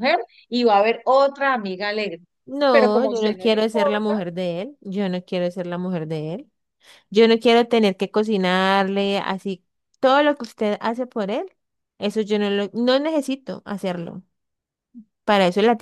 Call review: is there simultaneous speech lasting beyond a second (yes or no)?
yes